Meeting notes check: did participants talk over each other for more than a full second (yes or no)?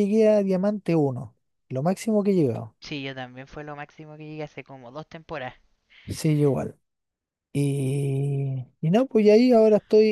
no